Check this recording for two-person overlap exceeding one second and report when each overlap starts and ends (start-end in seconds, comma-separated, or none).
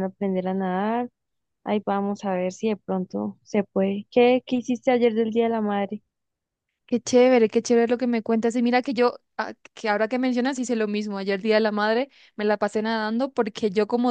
none